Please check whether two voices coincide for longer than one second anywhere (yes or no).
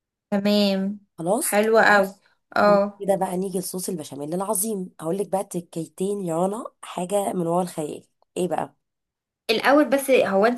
no